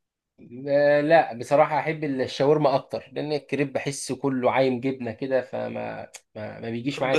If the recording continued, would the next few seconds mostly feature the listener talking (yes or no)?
yes